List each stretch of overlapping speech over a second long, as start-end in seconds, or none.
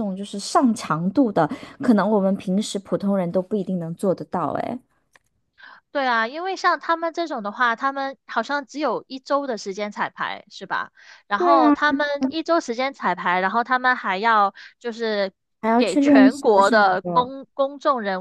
15.8-17.3